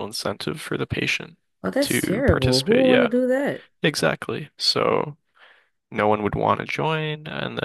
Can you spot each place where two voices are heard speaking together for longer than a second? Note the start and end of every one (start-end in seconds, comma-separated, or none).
1.8-3.1